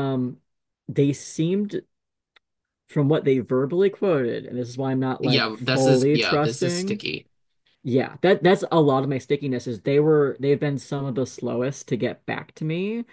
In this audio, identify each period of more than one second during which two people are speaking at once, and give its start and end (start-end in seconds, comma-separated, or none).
5.2-7.0